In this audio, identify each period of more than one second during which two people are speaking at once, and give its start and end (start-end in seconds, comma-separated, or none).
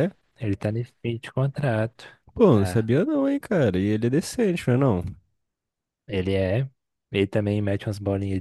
none